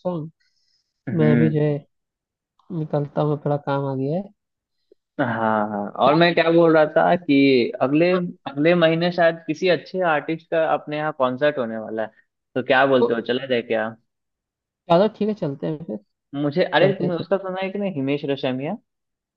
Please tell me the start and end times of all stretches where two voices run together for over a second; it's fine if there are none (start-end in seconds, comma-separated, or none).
none